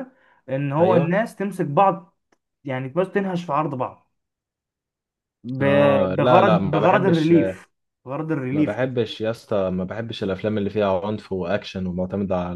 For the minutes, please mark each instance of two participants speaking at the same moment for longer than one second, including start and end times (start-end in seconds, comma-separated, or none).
5.6-7.3